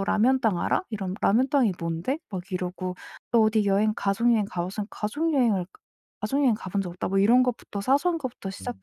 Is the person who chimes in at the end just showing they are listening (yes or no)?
yes